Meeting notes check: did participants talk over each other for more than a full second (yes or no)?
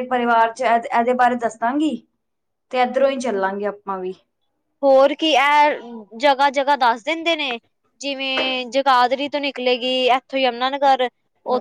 no